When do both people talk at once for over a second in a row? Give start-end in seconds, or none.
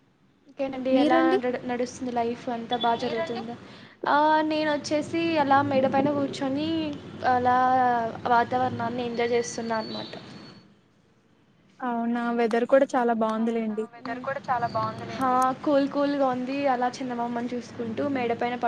none